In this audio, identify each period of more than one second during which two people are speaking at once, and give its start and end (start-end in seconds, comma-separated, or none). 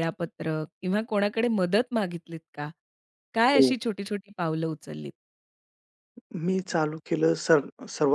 none